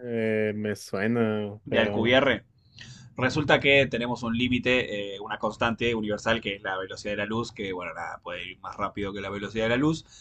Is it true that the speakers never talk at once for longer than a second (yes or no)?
yes